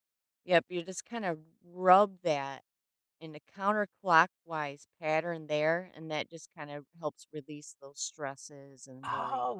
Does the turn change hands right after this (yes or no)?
yes